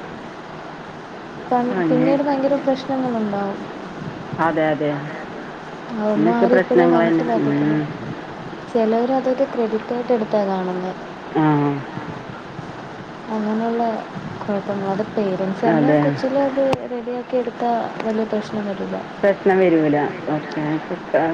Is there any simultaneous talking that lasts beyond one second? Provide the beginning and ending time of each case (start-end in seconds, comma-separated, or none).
6.2-7.8